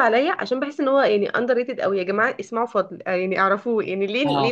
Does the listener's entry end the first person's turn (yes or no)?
no